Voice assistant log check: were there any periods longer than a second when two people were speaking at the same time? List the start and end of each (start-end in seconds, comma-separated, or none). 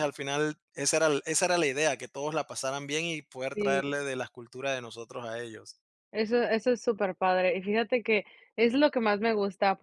none